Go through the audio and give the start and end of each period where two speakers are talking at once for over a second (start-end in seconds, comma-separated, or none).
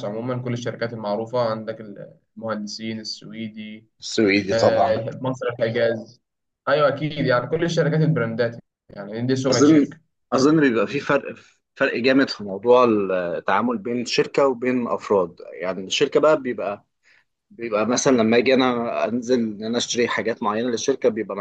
none